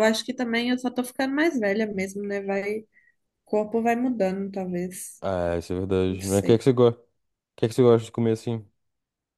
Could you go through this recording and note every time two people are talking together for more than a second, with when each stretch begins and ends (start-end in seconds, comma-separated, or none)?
none